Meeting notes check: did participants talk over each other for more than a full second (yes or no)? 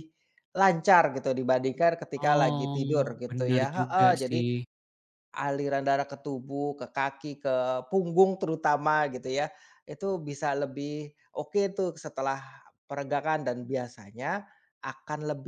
yes